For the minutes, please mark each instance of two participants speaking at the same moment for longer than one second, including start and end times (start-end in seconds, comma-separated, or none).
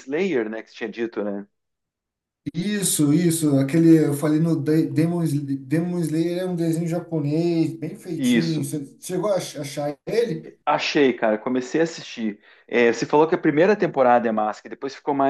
none